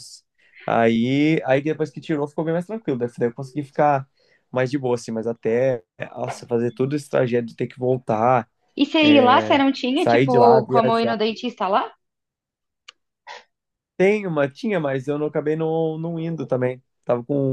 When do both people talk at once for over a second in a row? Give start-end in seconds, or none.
9.0-11.2